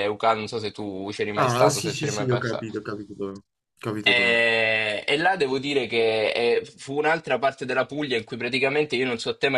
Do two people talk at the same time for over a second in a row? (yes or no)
yes